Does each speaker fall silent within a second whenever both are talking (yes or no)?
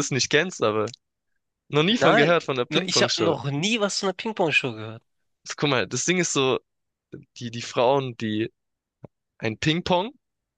no